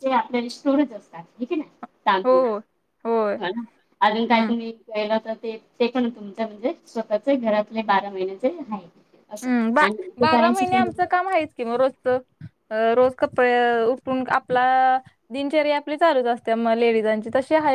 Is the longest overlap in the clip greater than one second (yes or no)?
no